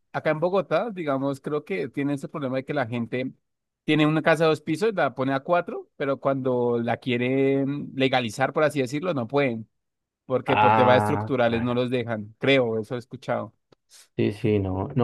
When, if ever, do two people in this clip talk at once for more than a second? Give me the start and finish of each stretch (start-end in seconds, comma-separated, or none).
10.4-11.8